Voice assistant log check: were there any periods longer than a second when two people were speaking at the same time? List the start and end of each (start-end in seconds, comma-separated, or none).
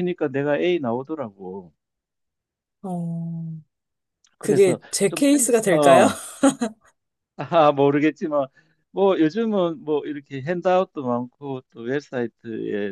4.4-6.1